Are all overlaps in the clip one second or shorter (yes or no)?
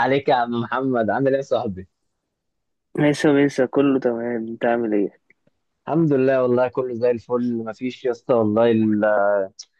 yes